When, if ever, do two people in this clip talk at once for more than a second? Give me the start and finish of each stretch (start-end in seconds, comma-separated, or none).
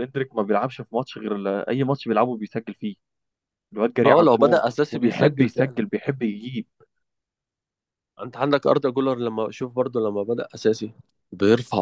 4.0-5.8